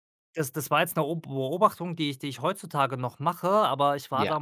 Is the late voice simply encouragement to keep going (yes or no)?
yes